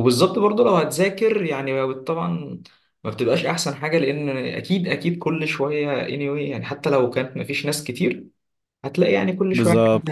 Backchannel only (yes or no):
no